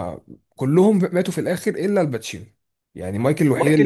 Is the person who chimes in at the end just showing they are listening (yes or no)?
no